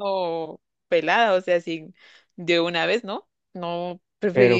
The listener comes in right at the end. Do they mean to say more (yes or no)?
yes